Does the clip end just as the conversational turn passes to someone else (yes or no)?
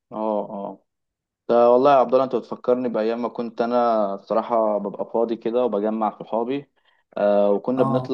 no